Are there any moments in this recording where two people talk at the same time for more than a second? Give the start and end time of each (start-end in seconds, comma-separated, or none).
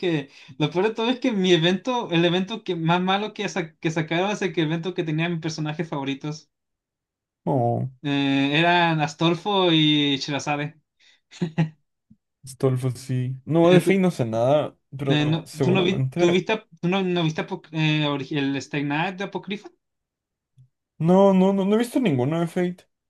15.1-16.4